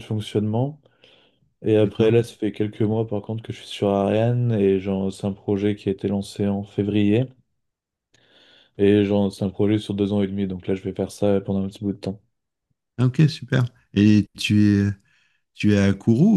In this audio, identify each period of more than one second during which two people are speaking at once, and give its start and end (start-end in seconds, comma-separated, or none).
none